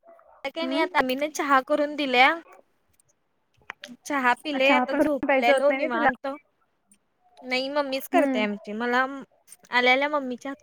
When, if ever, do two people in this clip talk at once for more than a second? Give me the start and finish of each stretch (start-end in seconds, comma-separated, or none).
4.6-6.1